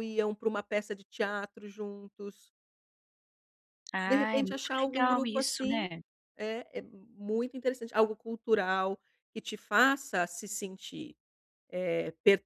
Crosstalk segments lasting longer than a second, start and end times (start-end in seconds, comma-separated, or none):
4.0-5.8